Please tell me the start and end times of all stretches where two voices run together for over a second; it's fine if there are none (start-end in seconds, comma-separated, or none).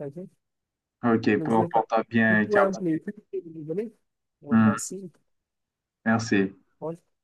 1.4-2.7